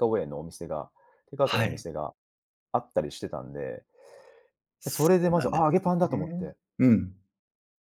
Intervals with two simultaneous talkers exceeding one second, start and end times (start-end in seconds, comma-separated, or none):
4.9-6.5